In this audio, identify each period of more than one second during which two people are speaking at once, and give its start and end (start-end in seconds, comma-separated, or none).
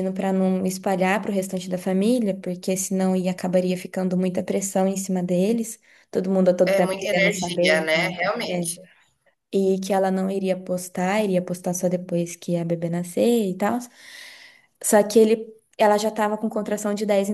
6.6-8.7